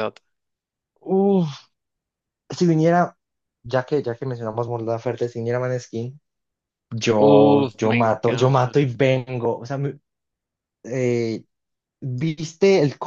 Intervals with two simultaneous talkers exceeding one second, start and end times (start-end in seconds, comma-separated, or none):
7.2-8.8